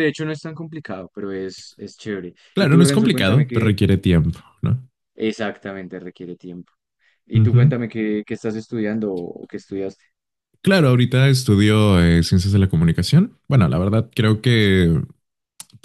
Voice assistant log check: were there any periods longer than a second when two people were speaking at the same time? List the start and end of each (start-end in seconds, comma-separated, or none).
2.5-3.7